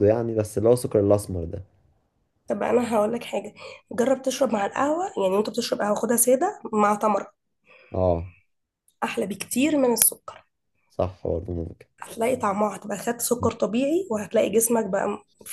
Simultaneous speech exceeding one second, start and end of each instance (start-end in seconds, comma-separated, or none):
none